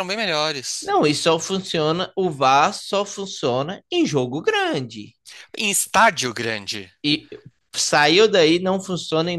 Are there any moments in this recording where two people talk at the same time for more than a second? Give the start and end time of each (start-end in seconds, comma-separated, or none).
none